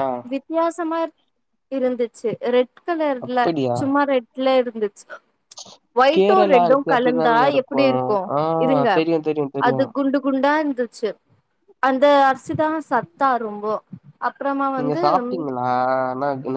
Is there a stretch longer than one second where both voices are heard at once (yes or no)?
yes